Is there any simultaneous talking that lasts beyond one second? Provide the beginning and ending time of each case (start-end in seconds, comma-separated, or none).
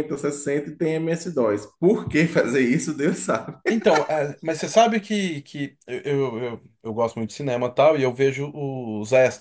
none